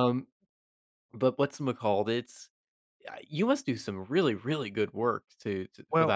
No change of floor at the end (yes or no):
no